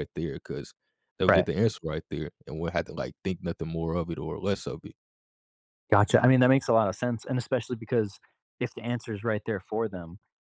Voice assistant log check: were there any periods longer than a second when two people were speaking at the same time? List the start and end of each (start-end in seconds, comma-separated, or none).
none